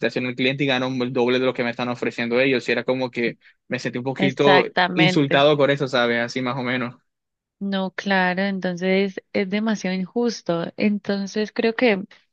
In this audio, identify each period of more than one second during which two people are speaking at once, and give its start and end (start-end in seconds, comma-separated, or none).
4.2-5.5